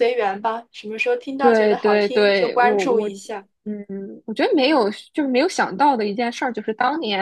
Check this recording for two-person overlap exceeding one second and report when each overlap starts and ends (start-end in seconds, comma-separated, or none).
1.4-3.1